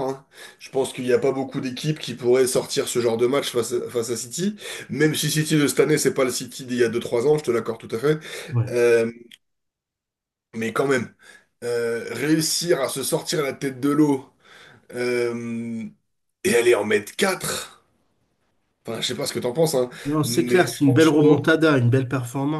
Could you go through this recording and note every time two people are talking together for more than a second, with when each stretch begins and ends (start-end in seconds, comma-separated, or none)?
20.0-21.6